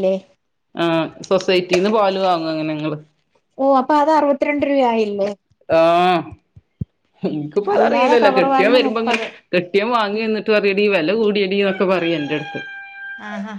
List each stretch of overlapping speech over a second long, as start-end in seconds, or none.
7.8-9.2